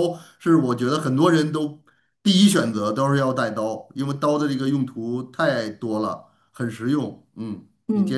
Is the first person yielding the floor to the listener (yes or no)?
yes